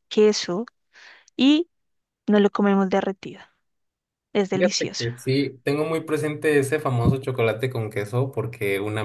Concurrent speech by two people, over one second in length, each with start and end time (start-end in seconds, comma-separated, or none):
none